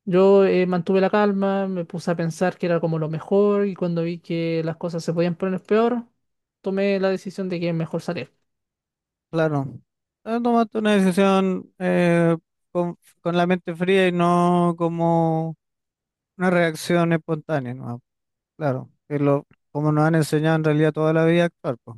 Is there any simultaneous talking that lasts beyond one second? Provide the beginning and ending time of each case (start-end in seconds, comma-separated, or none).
none